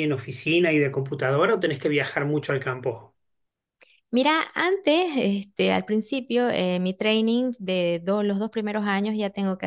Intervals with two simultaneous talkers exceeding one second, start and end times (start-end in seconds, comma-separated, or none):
none